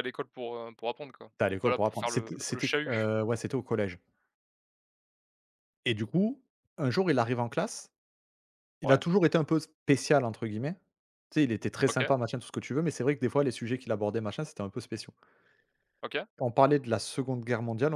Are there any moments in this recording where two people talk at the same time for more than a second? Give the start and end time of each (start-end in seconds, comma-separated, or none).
1.4-3.0